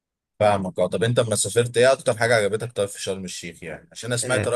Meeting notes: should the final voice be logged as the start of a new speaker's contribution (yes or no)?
no